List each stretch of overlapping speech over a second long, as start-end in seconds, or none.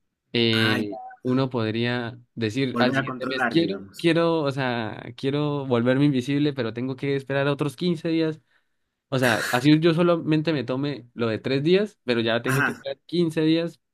2.7-4.0